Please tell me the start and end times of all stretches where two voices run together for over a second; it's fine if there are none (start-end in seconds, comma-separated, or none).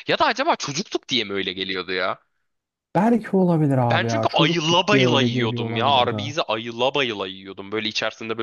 3.8-6.3